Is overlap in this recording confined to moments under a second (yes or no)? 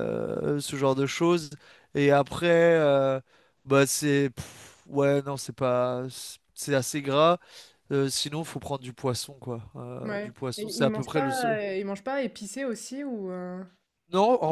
no